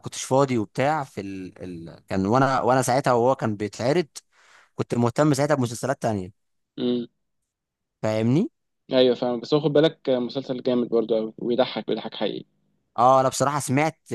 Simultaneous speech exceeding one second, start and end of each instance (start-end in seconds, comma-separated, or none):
none